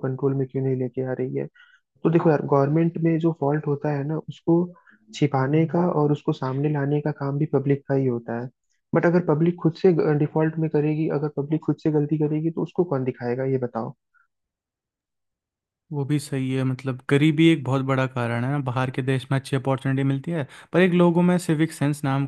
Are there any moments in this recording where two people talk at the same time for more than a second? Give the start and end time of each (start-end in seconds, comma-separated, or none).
none